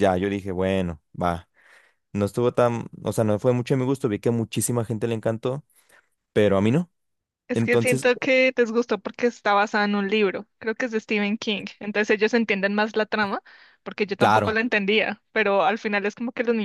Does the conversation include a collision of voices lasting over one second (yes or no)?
no